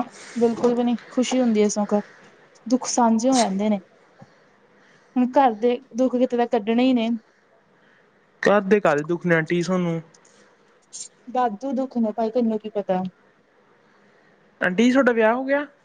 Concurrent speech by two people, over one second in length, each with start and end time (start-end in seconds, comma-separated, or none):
none